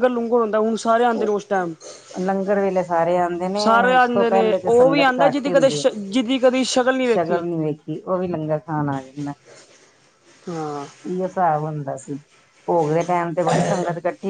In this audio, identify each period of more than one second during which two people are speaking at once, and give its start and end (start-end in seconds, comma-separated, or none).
3.6-5.7